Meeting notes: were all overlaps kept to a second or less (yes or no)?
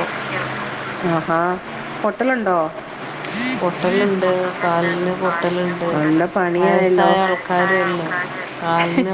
yes